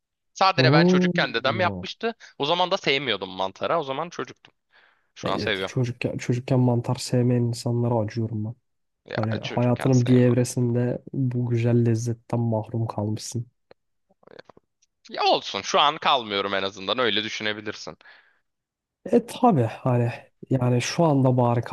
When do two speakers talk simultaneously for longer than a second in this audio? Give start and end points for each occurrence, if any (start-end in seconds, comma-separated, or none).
0.6-1.8, 9.1-10.4